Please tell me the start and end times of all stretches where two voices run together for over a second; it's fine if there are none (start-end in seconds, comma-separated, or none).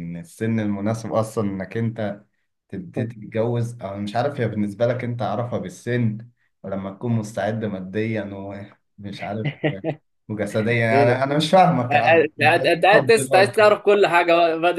11.9-13.5